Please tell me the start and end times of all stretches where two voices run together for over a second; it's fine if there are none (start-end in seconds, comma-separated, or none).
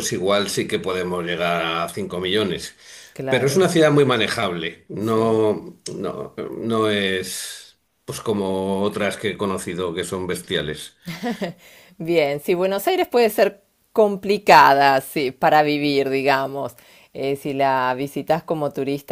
none